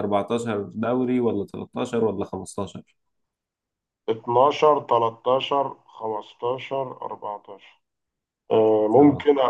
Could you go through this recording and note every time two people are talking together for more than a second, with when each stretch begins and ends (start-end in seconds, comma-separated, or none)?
none